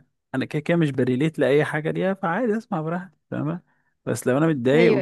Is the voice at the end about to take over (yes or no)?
no